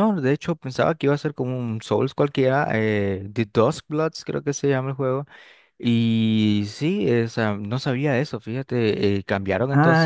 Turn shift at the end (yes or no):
yes